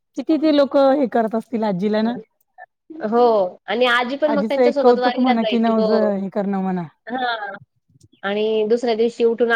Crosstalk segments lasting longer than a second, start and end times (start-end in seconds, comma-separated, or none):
4.3-5.9